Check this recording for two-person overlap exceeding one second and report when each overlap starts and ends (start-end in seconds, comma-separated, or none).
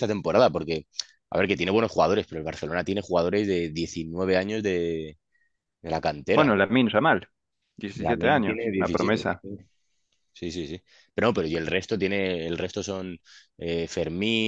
8.0-9.3